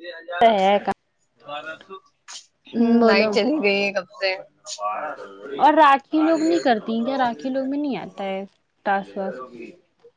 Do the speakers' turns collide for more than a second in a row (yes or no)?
no